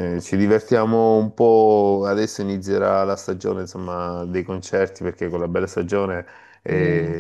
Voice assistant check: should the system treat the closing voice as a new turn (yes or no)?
no